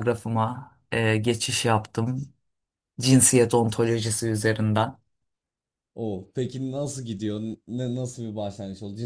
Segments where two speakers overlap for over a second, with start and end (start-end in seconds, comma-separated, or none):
none